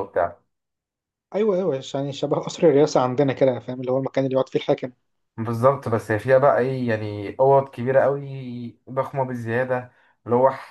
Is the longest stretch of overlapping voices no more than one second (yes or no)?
yes